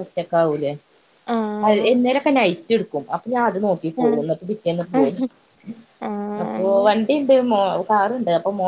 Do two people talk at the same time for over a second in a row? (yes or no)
no